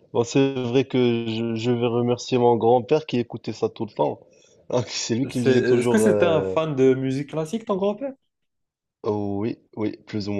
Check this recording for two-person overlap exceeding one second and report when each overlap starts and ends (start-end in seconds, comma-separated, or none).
5.3-6.5